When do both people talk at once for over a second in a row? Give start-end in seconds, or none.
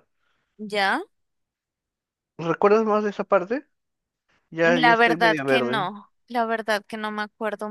4.6-5.9